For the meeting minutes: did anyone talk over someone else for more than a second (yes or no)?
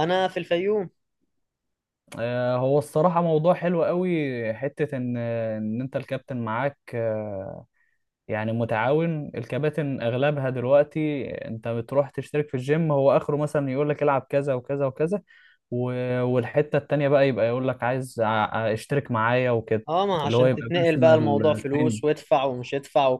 yes